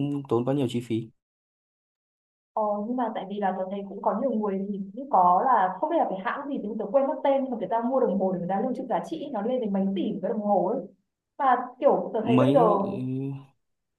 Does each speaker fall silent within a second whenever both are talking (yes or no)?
yes